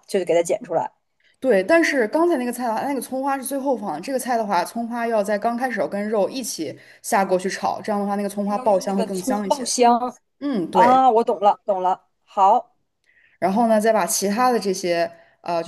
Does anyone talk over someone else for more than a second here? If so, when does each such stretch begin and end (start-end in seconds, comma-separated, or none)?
8.4-9.7